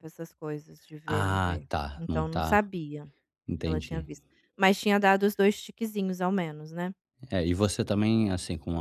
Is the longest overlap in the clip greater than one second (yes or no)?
yes